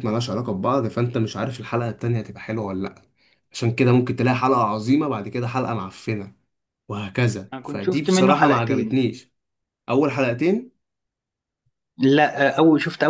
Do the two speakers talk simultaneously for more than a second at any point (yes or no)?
yes